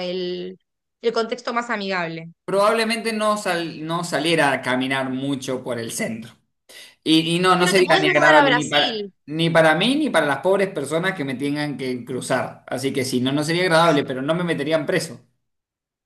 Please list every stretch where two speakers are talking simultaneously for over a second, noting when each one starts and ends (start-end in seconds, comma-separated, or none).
7.5-9.1